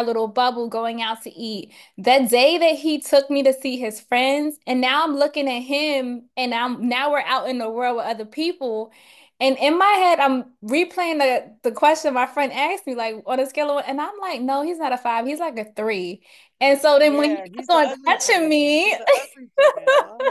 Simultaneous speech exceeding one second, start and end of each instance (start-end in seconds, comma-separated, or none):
17.0-18.9